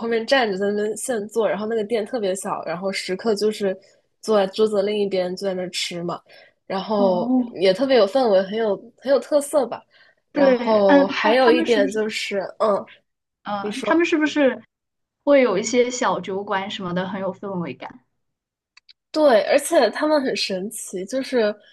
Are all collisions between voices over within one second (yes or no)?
no